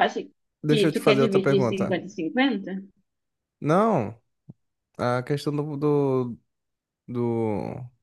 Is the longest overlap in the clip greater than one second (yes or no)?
yes